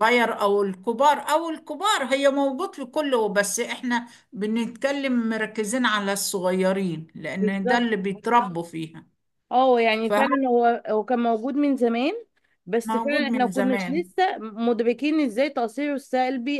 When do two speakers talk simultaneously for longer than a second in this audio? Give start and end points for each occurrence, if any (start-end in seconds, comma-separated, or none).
12.8-14.1